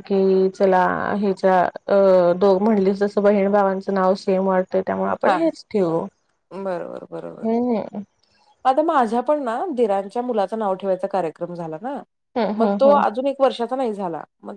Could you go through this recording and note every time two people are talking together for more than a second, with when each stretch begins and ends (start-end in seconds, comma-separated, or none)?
none